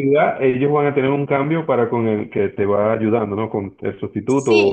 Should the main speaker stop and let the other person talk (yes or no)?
yes